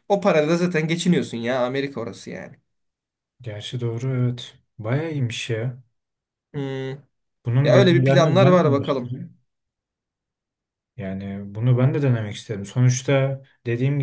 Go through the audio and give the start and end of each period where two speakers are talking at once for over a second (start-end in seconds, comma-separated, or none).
7.6-9.2